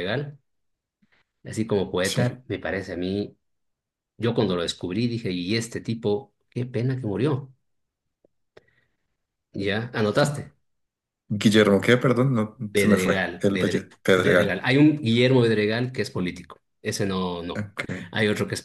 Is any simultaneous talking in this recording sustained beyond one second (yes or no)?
yes